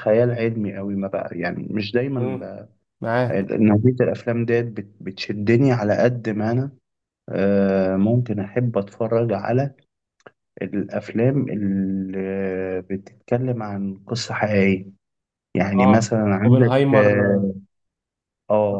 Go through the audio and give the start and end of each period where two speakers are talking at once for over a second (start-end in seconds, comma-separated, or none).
15.8-17.1